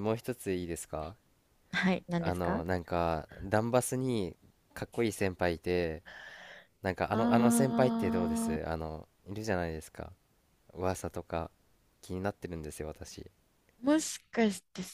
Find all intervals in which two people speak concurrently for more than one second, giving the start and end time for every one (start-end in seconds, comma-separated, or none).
7.1-8.6